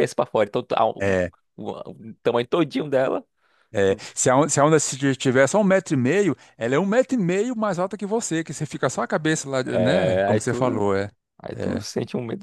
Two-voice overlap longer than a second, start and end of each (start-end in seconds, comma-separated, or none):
9.7-10.8